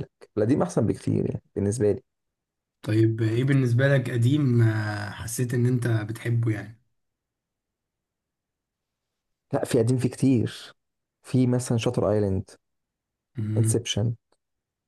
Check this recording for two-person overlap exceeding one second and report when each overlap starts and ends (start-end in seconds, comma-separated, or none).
none